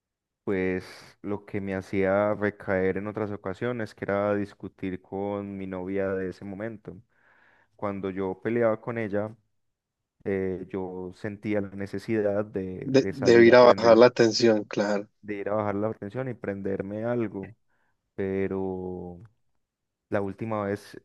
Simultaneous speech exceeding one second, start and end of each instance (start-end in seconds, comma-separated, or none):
12.8-14.1